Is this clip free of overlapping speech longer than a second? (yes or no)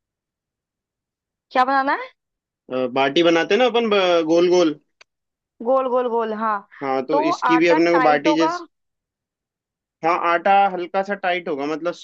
no